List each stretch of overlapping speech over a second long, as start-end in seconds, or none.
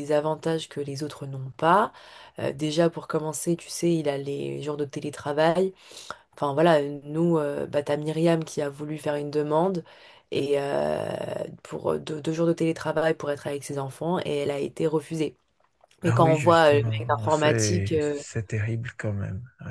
16.1-18.2